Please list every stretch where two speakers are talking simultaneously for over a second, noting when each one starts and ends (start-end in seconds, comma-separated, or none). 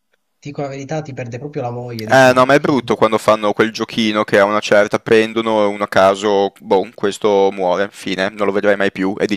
none